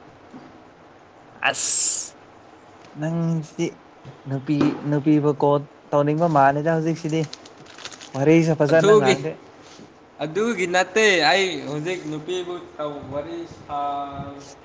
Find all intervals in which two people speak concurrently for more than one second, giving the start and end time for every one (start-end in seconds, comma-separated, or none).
none